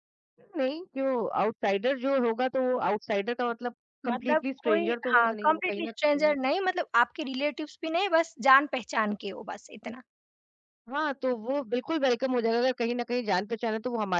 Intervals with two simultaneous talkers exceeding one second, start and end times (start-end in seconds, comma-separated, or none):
4.1-6.3